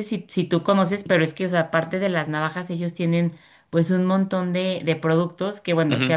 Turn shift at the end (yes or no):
no